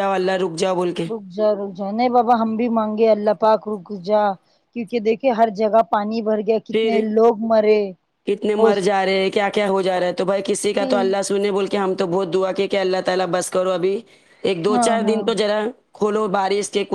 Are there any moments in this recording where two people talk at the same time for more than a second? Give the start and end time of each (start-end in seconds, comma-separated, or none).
none